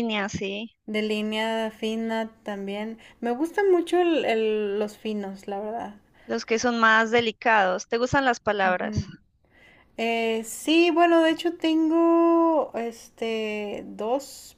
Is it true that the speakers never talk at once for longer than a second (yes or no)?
yes